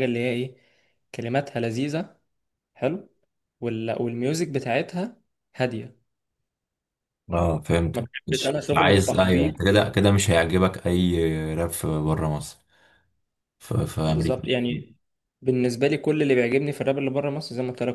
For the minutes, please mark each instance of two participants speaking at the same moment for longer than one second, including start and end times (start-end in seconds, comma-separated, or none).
7.9-9.5